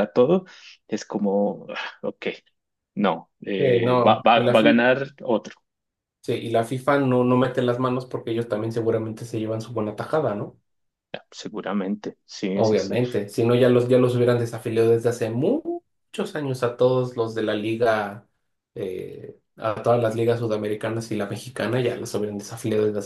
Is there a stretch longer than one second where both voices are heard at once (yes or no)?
yes